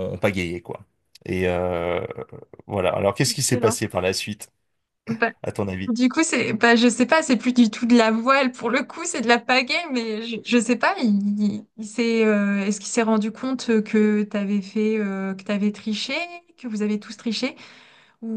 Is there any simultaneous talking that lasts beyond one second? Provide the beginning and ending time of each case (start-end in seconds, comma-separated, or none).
none